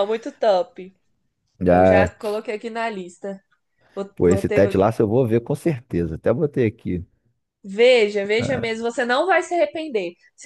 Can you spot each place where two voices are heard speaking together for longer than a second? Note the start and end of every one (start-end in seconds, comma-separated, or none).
none